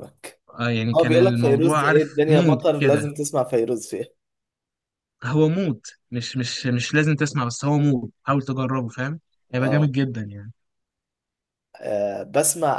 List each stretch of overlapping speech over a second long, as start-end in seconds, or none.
0.9-3.0